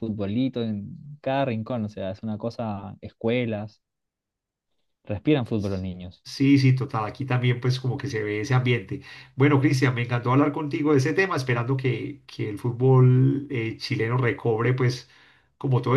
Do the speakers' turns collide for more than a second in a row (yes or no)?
no